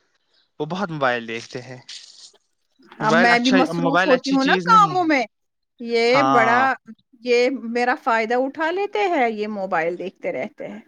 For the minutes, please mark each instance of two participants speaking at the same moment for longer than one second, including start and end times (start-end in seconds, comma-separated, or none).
3.1-5.1